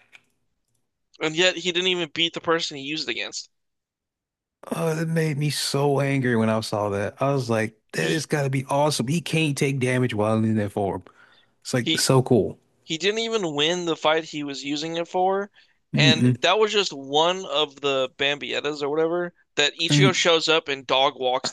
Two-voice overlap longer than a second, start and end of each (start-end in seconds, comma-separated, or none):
none